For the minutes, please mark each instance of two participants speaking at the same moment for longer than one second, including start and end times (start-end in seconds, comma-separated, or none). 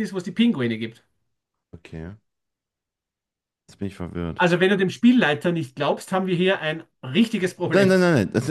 none